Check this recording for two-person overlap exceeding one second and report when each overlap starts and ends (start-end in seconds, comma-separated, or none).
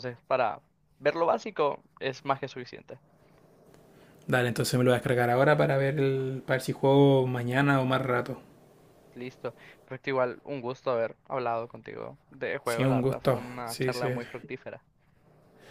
12.6-14.1